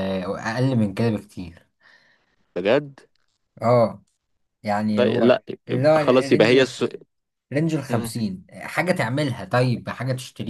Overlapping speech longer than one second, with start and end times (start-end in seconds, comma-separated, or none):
5.0-6.6